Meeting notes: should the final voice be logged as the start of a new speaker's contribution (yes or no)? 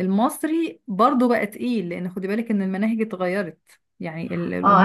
yes